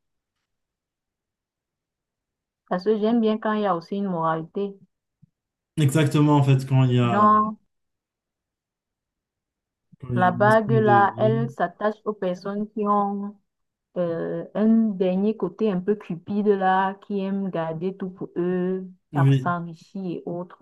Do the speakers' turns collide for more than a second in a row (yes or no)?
yes